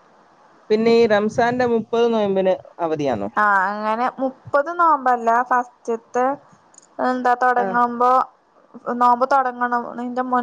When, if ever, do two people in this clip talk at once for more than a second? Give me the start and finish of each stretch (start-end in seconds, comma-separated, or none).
none